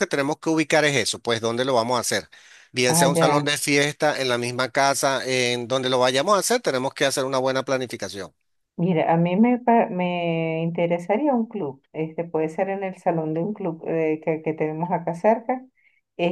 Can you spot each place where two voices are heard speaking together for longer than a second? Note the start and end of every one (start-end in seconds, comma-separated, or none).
none